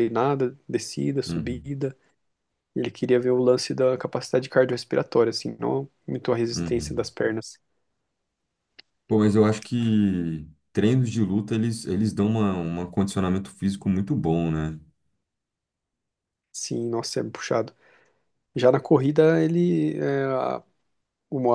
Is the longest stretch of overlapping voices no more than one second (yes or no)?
yes